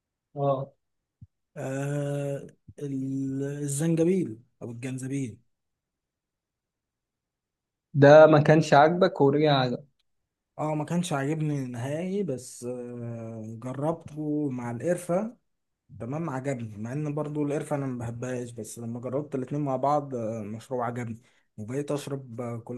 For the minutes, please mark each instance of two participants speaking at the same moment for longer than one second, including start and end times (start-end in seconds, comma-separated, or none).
none